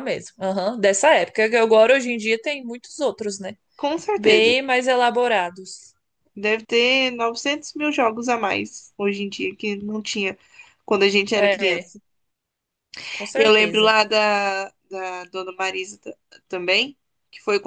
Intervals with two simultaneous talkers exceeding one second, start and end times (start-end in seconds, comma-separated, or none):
none